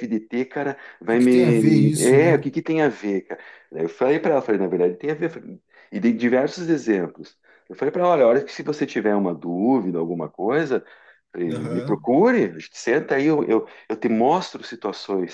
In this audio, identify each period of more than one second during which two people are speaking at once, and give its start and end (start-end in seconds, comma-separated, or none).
1.1-2.4